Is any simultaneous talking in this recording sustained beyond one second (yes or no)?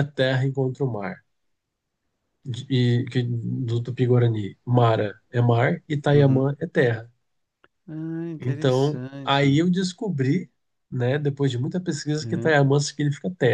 yes